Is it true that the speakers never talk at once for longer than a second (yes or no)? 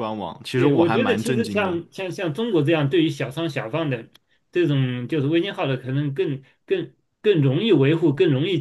no